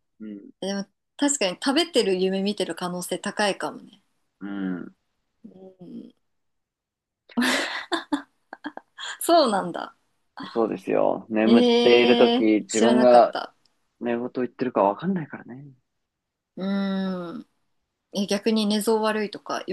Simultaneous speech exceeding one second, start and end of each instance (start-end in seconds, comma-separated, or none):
11.4-13.4